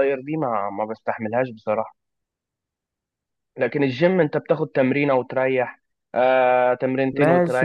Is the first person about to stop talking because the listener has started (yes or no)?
yes